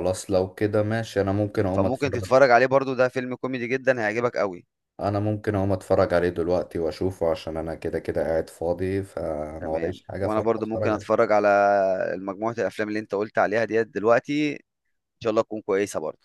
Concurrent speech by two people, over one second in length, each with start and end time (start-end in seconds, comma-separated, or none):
9.6-11.2